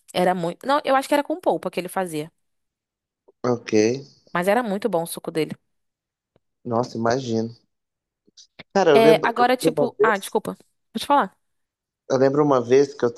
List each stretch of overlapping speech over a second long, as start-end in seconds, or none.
8.9-10.4